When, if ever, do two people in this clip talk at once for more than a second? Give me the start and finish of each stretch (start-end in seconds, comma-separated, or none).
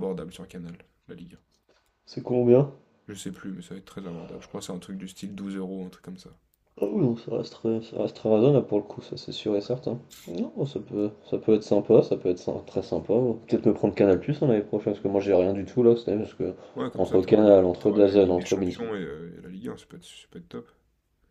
16.9-18.9